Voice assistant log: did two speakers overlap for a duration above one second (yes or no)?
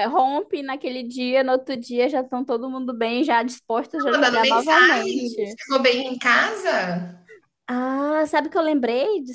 yes